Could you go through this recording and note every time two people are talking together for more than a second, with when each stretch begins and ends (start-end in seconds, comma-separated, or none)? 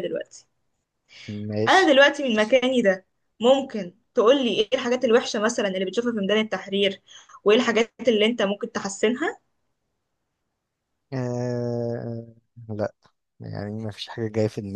none